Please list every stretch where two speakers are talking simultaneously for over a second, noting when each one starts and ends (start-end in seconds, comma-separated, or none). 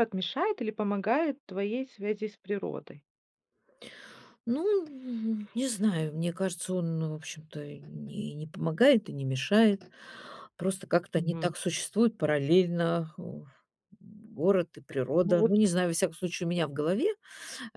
none